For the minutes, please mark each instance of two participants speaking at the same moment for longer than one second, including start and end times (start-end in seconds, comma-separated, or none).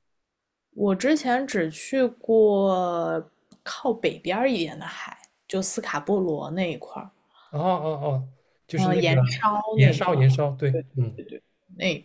8.8-10.2